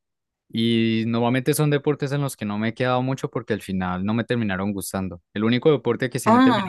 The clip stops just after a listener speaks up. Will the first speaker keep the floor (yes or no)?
yes